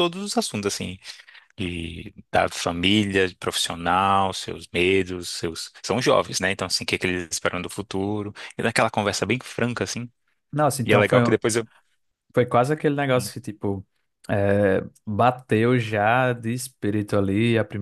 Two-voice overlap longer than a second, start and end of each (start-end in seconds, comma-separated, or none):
none